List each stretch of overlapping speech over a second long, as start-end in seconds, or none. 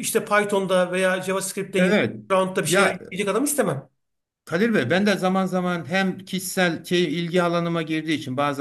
none